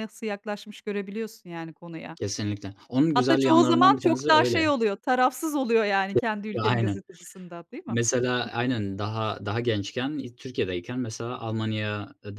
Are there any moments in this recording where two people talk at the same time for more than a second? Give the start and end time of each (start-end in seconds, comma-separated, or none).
3.1-4.7